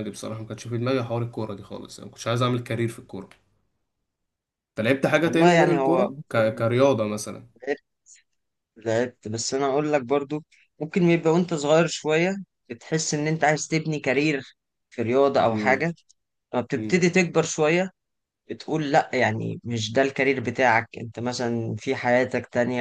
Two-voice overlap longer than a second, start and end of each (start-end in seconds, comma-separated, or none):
5.2-6.7